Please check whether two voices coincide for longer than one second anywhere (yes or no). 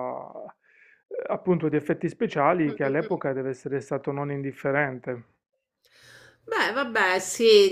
no